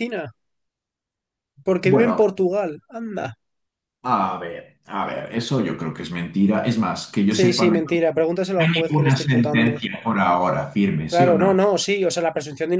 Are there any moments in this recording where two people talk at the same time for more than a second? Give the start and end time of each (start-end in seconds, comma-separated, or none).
8.6-9.8